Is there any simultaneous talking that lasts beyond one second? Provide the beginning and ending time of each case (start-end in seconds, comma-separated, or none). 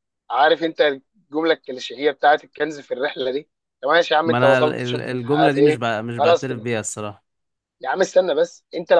4.2-6.7